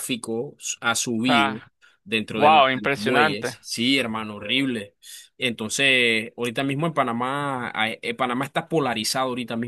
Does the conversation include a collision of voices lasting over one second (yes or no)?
yes